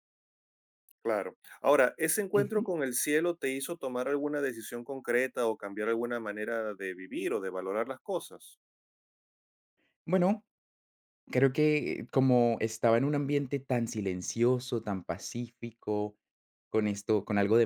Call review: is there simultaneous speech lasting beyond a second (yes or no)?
no